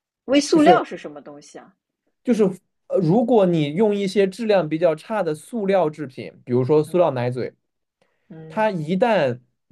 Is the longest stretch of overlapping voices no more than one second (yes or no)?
yes